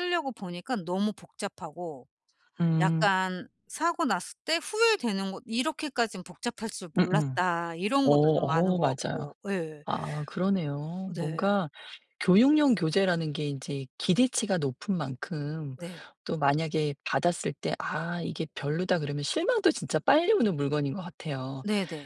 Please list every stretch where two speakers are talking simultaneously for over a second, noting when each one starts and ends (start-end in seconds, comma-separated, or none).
8.0-9.3